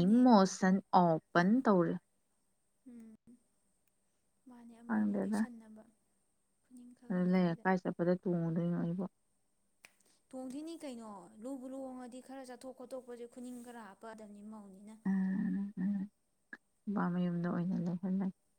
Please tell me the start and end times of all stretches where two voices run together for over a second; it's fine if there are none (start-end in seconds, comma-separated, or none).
none